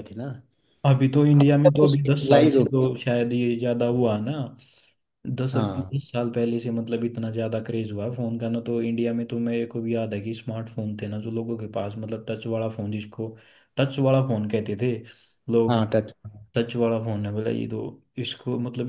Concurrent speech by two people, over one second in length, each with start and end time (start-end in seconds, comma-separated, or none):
1.4-2.9